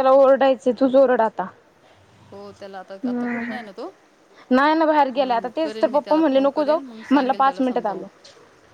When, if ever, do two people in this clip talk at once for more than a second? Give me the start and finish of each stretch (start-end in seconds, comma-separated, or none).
5.1-8.0